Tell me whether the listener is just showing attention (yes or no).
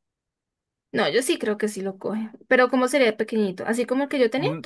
no